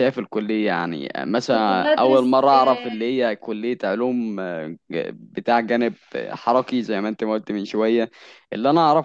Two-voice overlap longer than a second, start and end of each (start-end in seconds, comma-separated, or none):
1.5-3.2